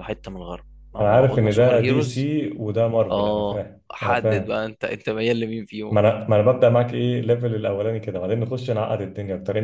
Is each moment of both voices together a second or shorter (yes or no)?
no